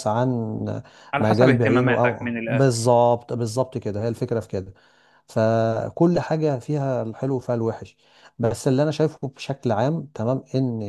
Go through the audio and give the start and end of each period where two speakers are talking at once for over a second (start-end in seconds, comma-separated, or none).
1.2-2.9